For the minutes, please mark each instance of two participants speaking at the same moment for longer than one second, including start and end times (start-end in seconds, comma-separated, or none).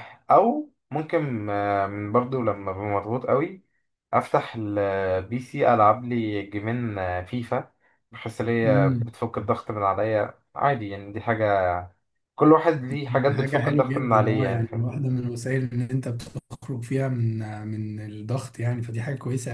13.3-14.9